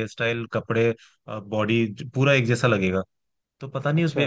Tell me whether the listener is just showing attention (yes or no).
yes